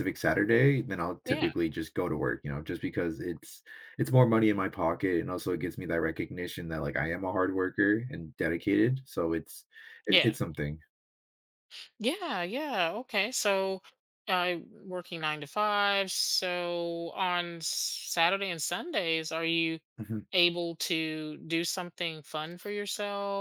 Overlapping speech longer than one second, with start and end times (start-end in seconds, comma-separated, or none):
none